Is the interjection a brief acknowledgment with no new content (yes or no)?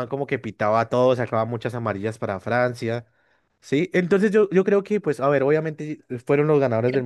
no